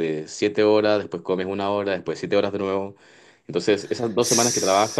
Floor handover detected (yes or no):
no